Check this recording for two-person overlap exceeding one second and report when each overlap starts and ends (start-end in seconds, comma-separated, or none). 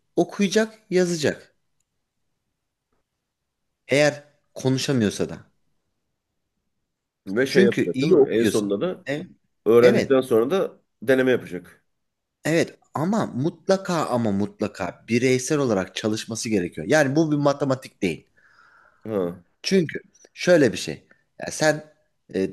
7.5-8.7